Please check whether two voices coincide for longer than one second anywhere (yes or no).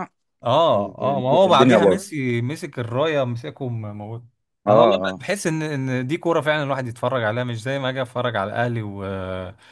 yes